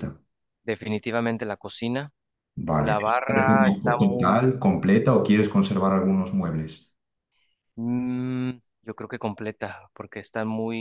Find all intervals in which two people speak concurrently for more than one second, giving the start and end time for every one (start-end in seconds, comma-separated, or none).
2.8-4.4